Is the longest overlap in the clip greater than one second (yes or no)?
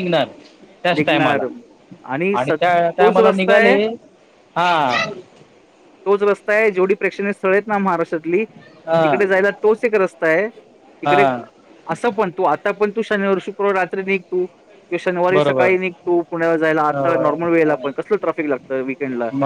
yes